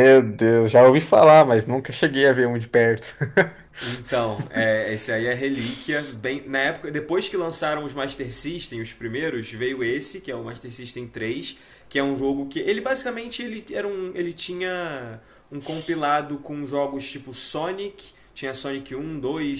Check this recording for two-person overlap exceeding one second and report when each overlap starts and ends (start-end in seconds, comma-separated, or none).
none